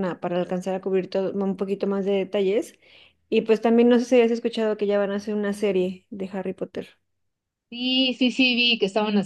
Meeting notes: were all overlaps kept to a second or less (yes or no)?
yes